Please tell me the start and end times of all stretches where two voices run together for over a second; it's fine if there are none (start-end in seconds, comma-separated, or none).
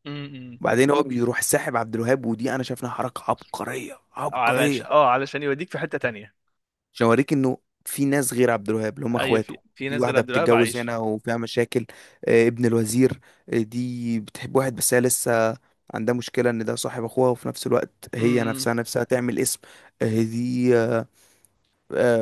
9.2-10.9